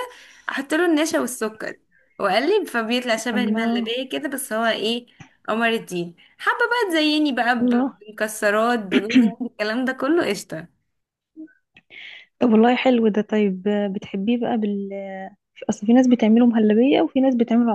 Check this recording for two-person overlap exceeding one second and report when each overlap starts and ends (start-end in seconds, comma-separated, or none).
none